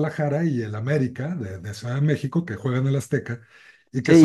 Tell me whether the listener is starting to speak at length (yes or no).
yes